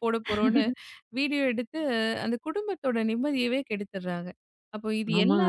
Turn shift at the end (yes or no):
yes